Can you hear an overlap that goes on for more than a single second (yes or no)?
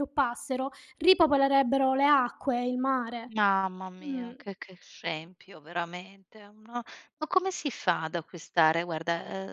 no